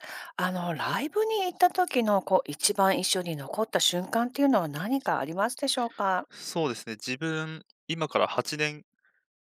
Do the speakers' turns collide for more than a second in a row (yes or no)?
no